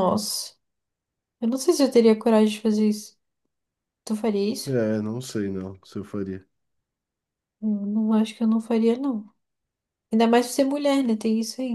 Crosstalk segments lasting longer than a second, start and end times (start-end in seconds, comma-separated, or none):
none